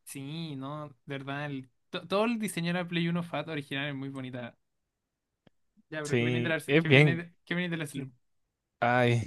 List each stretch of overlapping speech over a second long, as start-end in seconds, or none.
6.0-7.2